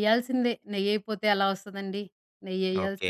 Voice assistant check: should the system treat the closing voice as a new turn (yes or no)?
yes